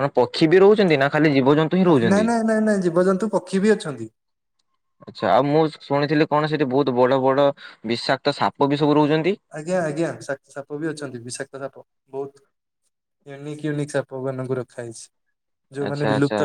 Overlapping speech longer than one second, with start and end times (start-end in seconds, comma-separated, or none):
none